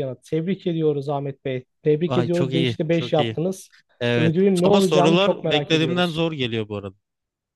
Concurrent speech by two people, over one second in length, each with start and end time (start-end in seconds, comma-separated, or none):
2.1-3.4, 4.2-6.2